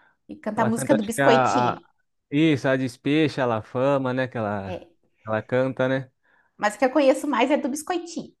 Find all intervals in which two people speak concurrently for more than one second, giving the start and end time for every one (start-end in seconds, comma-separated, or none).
0.6-1.8